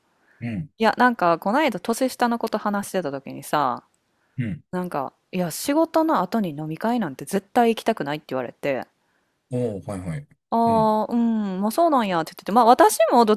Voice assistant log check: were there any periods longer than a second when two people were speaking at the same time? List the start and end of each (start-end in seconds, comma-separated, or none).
none